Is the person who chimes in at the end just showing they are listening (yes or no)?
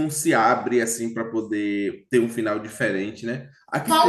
no